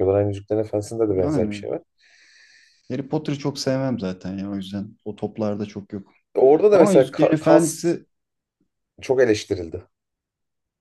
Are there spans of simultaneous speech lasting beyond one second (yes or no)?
yes